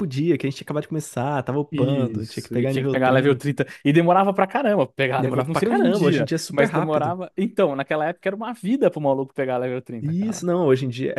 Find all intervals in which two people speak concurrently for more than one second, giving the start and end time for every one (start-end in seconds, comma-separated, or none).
1.7-3.5, 5.2-7.2